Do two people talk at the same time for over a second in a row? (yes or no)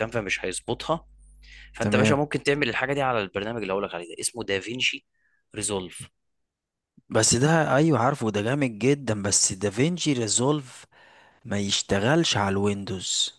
no